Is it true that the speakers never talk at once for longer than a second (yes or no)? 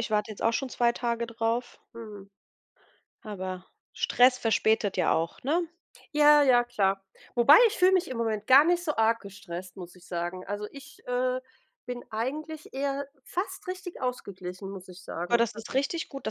yes